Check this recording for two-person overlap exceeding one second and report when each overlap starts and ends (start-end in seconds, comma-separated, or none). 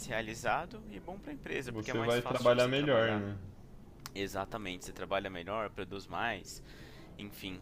1.7-3.2